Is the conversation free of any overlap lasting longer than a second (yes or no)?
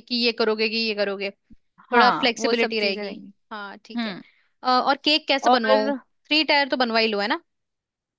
no